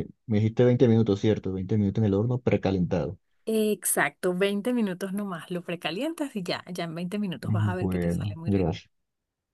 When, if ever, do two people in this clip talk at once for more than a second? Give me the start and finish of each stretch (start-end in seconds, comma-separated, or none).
7.4-8.7